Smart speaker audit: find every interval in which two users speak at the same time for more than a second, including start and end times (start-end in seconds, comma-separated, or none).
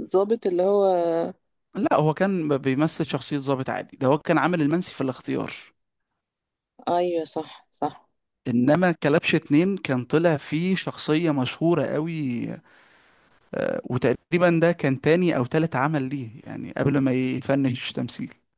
none